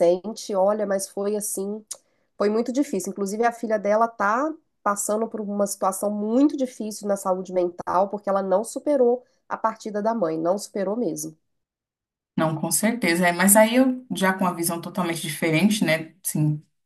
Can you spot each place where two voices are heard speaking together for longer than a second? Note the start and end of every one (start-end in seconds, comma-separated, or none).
none